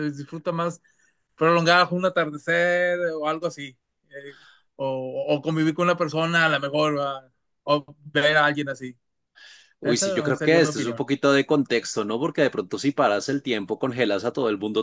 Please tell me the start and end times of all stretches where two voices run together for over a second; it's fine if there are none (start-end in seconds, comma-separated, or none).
9.8-11.1